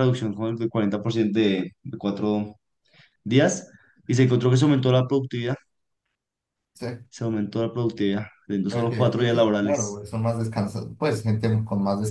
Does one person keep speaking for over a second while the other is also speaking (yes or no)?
yes